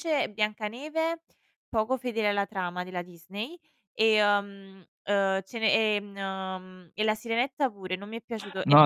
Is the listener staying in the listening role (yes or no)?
no